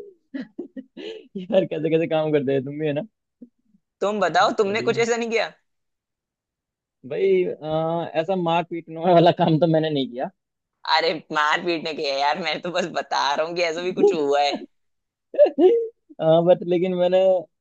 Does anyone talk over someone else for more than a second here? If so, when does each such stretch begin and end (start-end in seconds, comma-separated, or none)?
none